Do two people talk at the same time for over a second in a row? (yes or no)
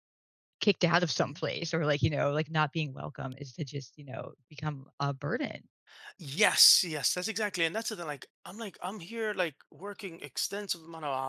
no